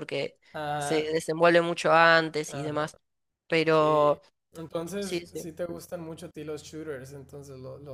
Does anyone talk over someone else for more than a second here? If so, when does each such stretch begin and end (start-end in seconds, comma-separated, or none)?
none